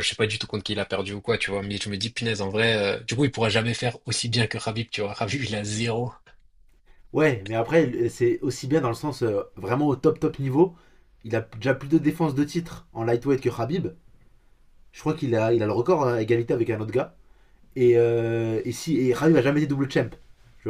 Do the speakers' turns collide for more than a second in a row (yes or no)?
no